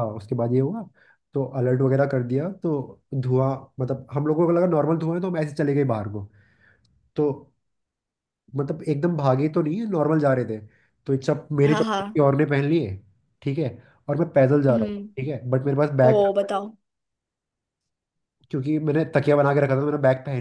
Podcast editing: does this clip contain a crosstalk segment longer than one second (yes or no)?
no